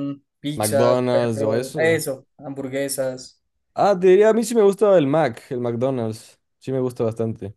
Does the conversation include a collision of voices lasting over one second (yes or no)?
yes